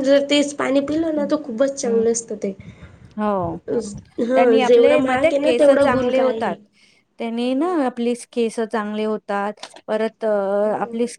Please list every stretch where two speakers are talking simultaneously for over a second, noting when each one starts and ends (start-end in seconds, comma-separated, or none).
4.3-6.6